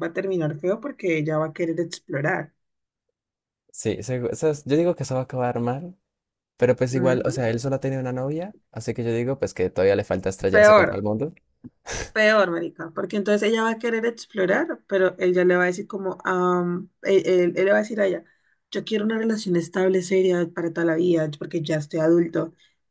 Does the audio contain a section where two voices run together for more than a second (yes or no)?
no